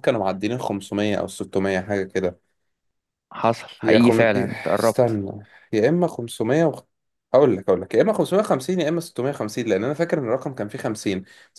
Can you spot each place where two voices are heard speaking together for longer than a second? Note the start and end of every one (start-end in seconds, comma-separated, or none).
3.8-5.2